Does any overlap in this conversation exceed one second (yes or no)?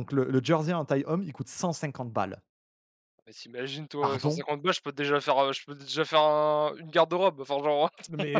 no